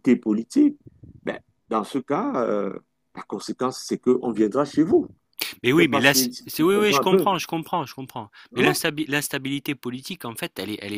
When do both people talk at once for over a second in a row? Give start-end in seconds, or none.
5.7-7.3